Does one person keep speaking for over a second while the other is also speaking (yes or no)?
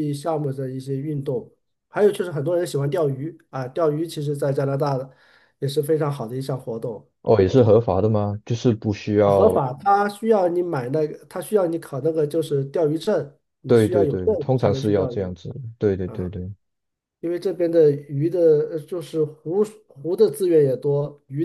yes